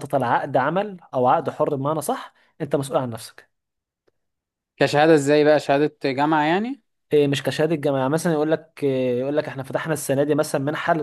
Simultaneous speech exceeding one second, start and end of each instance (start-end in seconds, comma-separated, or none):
none